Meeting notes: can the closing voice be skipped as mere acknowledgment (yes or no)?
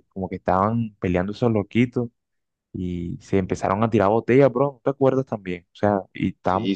yes